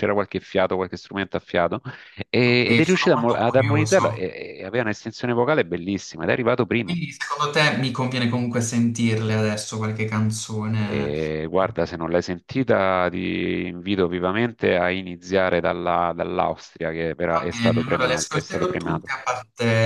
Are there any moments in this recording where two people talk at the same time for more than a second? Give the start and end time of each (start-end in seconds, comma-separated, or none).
2.5-4.0, 17.3-19.1